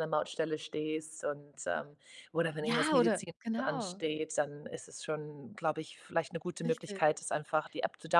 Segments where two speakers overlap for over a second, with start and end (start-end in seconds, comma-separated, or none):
2.6-4.0